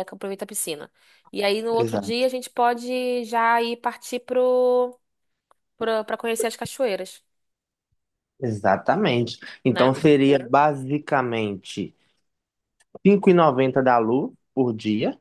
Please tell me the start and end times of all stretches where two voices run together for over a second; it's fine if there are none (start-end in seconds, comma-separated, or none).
none